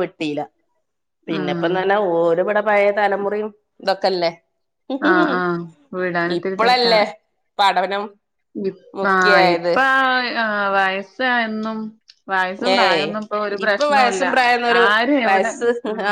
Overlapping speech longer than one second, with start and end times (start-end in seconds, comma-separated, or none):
none